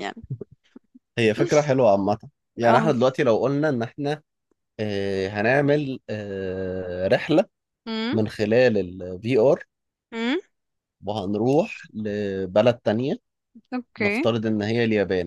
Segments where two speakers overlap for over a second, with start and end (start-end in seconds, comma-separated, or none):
none